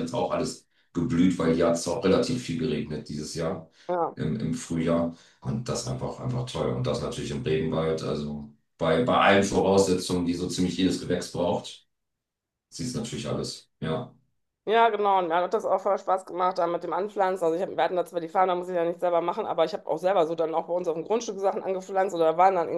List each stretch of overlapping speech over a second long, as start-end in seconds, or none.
none